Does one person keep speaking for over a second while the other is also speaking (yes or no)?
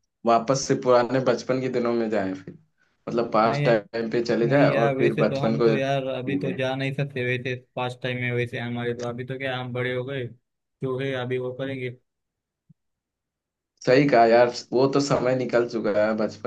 yes